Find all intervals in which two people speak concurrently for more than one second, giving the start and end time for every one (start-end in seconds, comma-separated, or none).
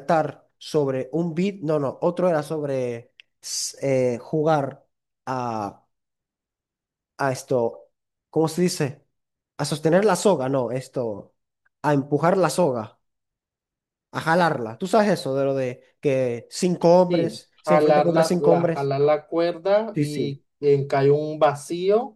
17.1-18.9